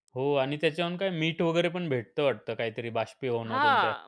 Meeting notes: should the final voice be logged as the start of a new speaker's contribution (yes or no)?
yes